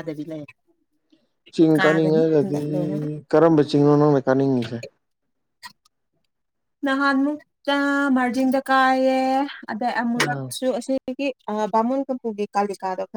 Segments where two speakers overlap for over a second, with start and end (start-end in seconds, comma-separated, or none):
none